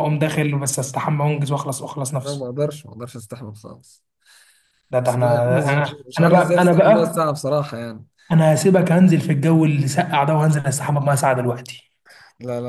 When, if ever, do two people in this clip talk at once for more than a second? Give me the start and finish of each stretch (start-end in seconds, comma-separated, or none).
5.0-7.2